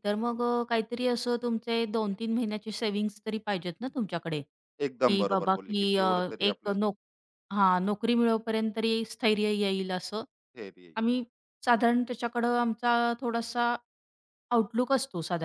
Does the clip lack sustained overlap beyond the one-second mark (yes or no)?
no